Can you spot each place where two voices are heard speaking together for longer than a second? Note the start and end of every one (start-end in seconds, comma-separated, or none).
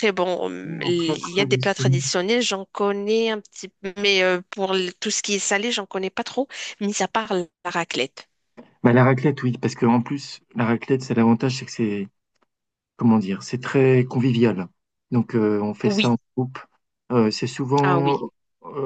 0.6-2.0